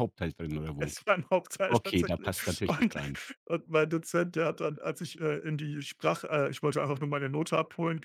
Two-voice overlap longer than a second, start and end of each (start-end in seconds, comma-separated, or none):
1.7-2.9